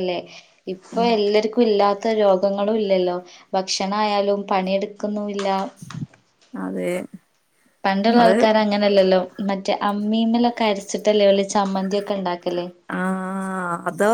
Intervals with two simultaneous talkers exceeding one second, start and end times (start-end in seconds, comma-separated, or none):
none